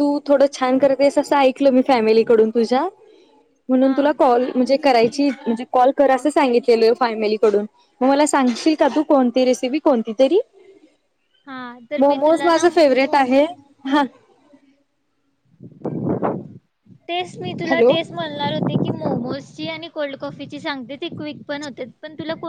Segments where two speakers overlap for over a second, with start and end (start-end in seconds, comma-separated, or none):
12.0-13.3